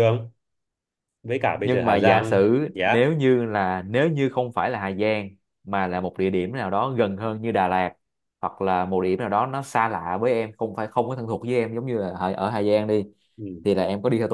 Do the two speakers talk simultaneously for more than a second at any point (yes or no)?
yes